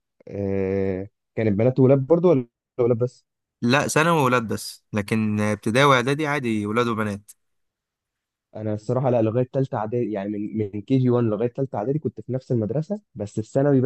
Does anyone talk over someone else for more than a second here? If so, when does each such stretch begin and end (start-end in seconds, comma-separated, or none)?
none